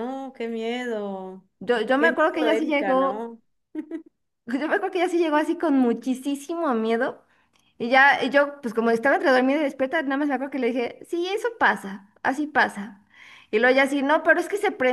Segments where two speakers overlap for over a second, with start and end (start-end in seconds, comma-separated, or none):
2.0-3.3